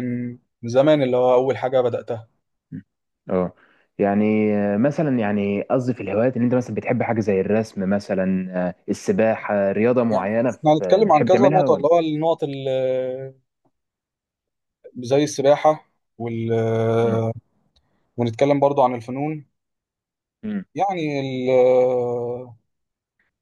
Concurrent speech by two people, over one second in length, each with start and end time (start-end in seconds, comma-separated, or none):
10.1-11.9